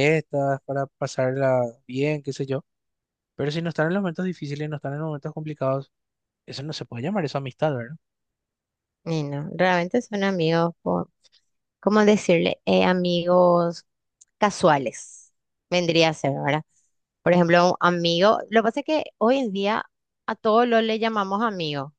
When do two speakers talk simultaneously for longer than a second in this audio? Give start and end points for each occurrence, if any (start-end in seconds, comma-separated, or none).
none